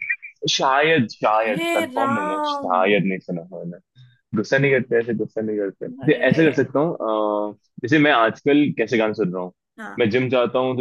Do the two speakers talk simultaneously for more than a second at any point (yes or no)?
yes